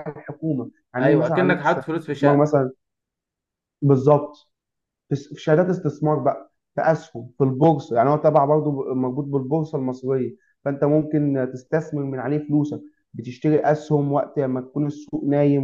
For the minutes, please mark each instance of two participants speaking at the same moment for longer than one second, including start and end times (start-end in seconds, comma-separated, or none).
1.0-2.6